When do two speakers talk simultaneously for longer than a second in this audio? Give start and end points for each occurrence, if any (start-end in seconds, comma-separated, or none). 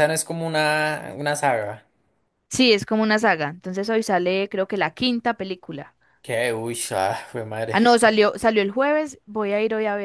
none